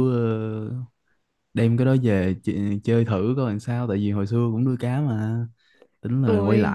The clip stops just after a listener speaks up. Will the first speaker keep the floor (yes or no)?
yes